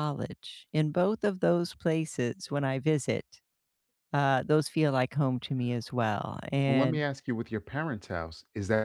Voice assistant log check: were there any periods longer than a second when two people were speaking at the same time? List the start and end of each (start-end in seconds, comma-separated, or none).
none